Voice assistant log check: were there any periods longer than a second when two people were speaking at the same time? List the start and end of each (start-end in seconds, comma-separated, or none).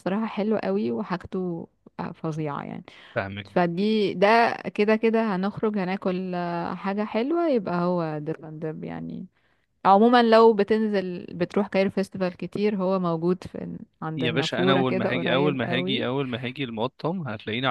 14.2-16.1